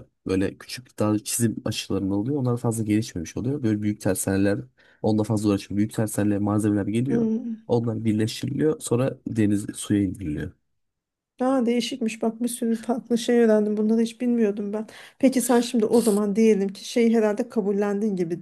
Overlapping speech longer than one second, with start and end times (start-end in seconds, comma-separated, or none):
none